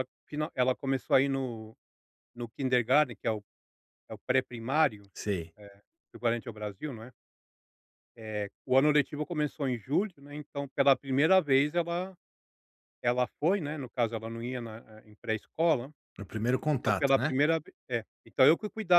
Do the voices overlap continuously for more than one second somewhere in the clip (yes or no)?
no